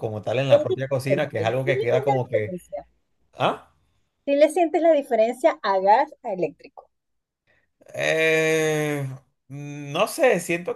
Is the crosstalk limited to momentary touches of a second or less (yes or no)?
no